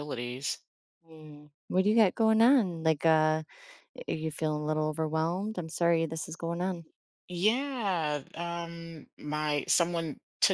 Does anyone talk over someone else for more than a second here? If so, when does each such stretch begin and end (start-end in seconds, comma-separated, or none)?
none